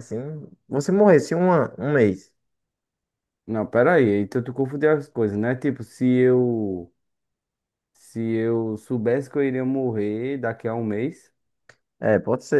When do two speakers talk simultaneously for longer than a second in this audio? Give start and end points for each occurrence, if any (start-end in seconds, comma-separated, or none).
none